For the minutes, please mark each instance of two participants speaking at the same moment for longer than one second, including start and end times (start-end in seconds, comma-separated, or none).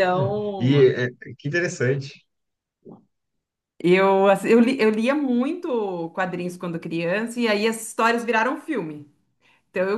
none